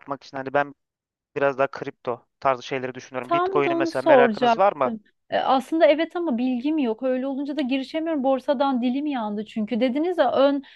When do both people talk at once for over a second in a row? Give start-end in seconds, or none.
3.2-4.9